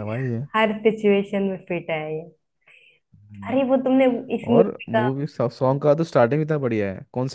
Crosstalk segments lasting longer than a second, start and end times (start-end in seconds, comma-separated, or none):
none